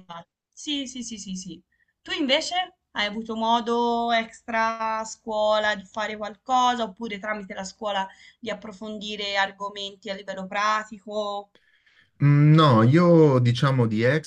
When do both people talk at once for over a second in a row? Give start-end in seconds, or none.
none